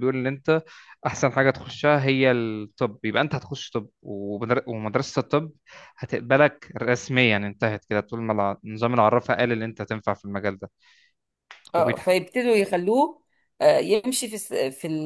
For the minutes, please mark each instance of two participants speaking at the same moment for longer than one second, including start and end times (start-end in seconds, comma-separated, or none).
none